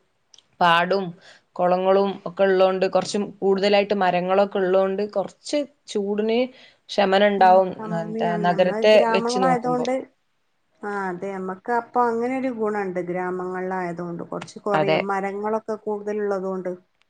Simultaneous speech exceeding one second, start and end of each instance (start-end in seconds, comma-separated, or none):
7.4-9.9